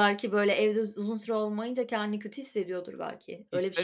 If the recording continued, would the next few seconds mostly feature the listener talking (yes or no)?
yes